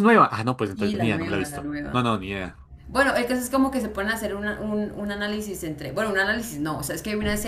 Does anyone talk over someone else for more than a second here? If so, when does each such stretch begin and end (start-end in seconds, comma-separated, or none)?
0.7-2.0